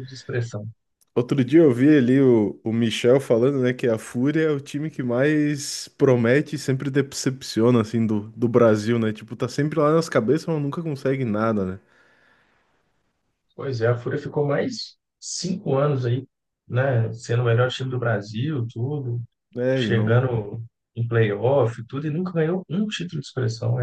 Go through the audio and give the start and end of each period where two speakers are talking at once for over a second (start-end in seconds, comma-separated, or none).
none